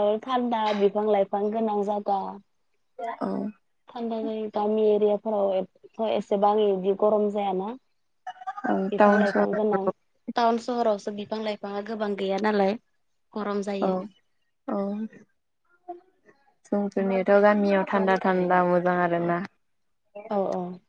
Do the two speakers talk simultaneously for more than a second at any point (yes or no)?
no